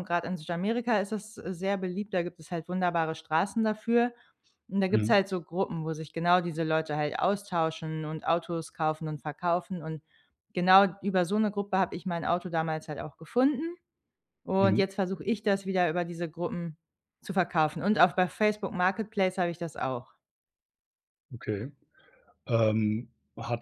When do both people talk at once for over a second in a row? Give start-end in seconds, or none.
none